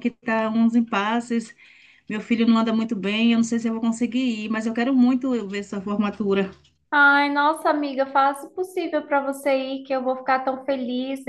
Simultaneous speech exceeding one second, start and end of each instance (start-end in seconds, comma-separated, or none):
none